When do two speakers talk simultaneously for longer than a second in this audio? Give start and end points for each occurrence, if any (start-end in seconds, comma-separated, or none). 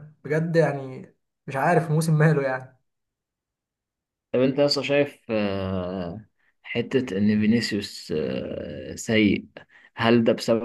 none